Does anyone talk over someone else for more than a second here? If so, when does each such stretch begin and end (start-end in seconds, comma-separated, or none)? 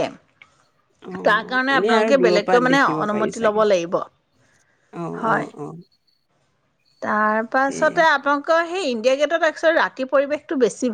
1.3-3.6